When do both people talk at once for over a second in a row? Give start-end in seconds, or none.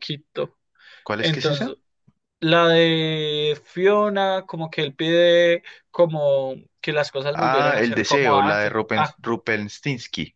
7.3-9.2